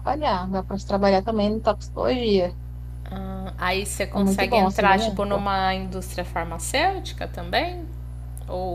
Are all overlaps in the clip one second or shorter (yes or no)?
no